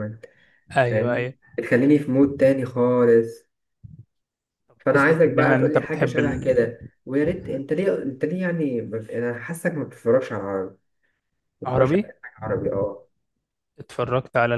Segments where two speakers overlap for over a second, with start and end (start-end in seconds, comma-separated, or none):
4.9-6.2